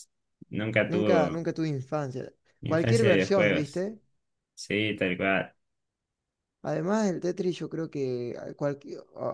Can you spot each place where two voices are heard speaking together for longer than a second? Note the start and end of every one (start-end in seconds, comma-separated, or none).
2.6-3.9